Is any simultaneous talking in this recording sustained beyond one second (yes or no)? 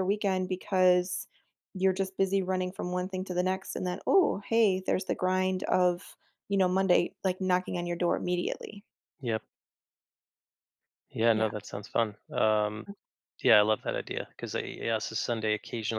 no